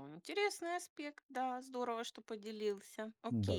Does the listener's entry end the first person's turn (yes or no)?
yes